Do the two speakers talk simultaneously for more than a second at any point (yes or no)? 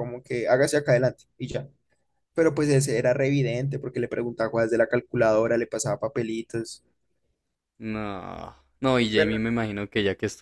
no